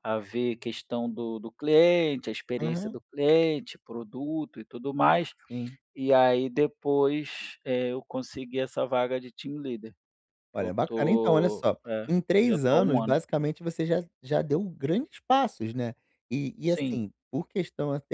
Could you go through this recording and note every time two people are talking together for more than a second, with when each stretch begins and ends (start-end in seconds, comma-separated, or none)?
10.5-13.2